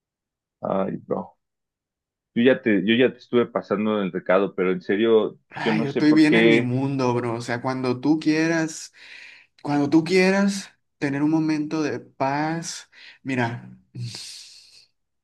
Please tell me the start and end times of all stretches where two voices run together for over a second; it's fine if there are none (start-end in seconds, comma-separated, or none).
5.5-6.7